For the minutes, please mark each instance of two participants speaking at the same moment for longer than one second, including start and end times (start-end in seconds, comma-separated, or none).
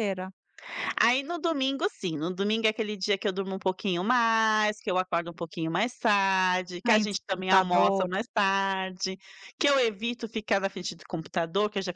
6.9-8.1